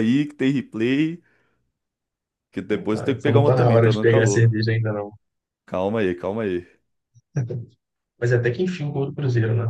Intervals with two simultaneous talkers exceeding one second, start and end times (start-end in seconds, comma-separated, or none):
2.9-4.5